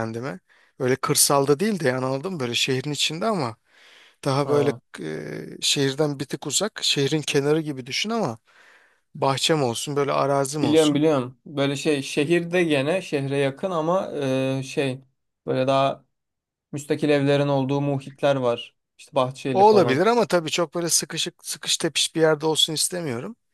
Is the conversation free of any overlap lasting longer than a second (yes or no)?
yes